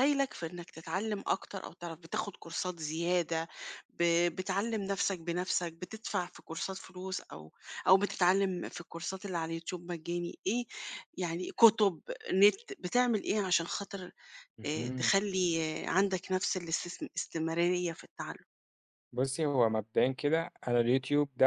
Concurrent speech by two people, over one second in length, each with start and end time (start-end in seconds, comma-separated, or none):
none